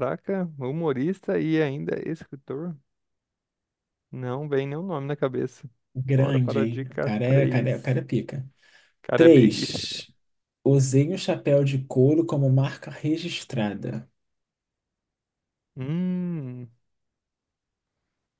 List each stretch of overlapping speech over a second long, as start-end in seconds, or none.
6.0-8.0